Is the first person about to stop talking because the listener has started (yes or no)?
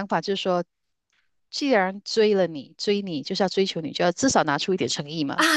yes